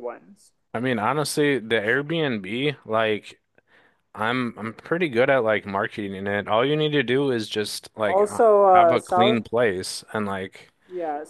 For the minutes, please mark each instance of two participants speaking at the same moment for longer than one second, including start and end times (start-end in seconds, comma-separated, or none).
8.0-9.4